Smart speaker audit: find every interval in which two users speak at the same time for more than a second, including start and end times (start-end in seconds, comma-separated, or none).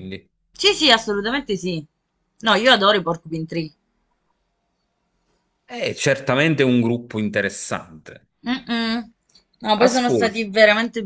none